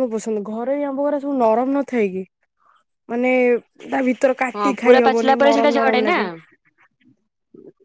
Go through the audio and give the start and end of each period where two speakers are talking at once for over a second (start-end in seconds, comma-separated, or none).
4.5-6.2